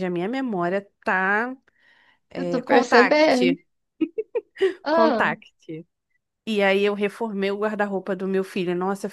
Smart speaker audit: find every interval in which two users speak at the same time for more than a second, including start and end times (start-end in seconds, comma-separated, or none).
2.3-3.6